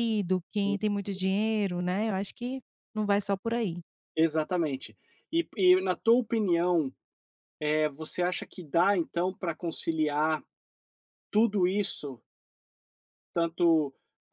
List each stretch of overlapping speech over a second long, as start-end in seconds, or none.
none